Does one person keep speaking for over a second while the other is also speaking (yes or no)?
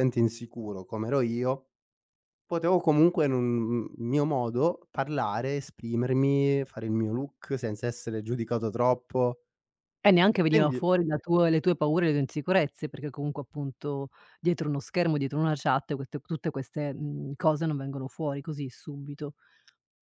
no